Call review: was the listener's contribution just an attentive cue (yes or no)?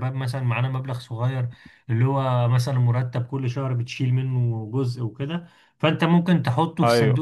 yes